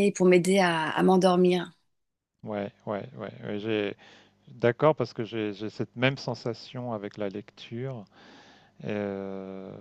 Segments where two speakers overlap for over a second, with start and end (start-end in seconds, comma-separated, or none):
none